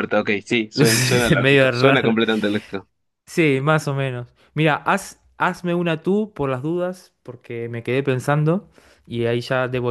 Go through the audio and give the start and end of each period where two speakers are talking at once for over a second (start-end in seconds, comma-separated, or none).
0.7-2.1